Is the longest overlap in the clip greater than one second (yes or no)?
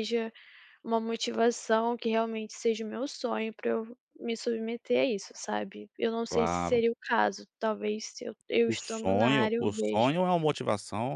yes